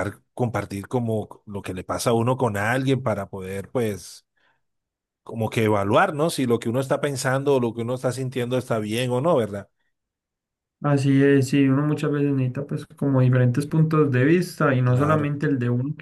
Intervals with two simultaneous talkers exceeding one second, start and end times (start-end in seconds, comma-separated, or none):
none